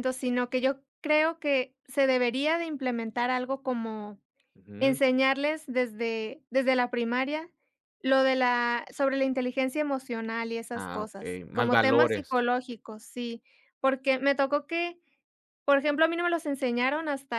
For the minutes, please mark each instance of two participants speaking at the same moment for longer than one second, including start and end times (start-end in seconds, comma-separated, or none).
10.8-12.4